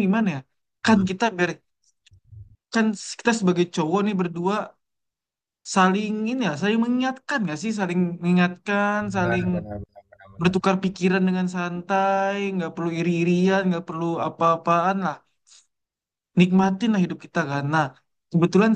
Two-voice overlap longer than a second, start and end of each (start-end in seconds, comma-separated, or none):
none